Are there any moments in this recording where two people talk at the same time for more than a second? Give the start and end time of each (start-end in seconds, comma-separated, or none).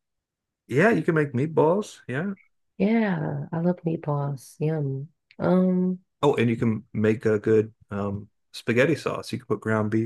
none